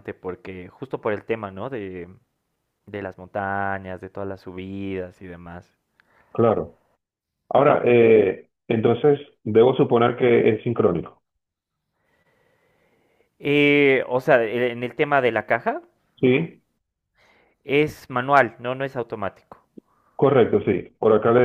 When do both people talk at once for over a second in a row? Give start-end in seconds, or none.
none